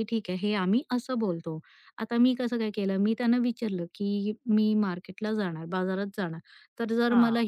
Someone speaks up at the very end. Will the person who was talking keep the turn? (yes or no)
yes